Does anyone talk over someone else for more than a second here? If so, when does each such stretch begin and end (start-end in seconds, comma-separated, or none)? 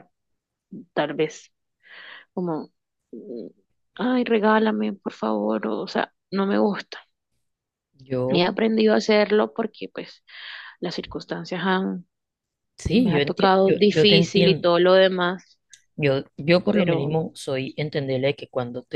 12.9-14.7